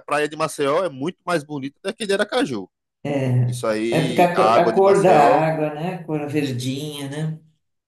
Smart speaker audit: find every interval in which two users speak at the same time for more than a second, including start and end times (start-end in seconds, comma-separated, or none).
3.5-5.5